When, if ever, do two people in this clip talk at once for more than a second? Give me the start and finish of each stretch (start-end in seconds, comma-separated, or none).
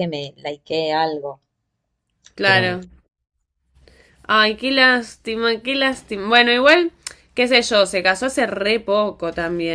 none